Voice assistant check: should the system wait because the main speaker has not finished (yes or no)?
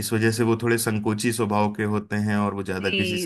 no